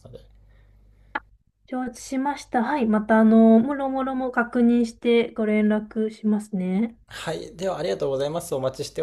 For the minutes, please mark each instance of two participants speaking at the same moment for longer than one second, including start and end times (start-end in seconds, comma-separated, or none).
none